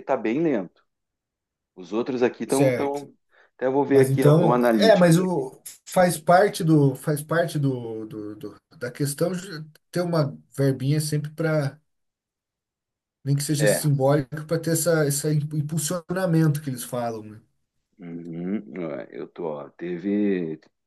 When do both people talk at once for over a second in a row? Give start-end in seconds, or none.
3.9-5.4